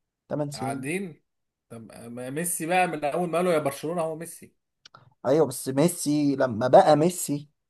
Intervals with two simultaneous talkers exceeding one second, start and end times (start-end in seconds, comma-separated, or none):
none